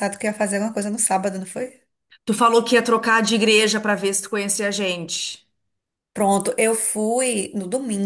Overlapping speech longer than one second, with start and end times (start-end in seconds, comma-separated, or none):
none